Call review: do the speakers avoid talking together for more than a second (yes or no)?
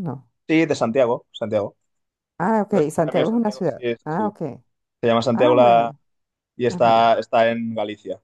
no